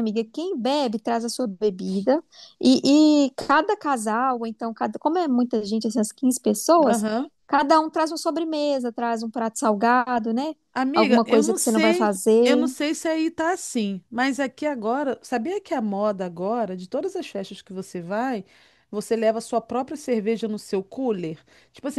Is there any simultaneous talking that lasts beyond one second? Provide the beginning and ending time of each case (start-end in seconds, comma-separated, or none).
10.9-12.7